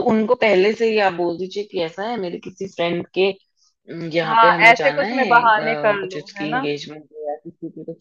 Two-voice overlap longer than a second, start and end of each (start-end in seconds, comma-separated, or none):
4.2-6.7